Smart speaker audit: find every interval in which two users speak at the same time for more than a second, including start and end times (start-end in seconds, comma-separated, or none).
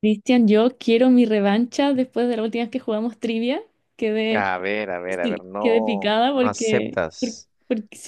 5.1-7.5